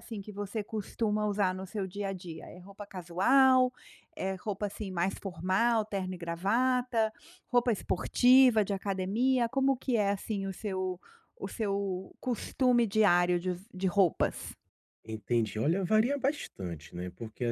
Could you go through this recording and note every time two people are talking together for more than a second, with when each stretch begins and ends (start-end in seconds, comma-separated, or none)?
none